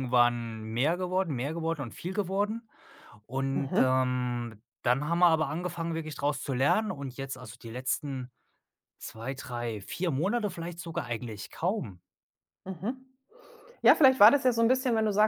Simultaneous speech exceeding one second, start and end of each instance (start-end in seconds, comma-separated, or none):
none